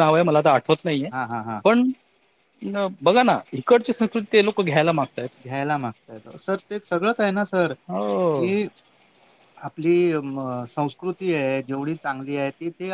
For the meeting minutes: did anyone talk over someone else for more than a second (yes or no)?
no